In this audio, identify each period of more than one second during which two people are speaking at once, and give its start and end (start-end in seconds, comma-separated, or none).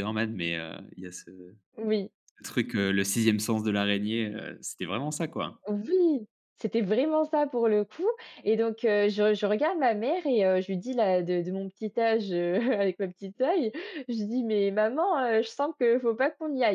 none